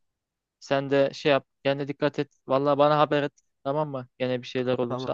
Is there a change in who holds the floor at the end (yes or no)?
yes